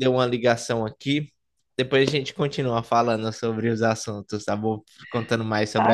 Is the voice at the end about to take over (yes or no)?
yes